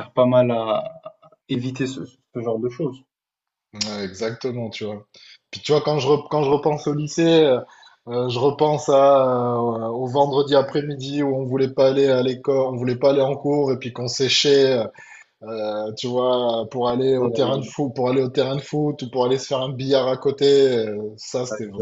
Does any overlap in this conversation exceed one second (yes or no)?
no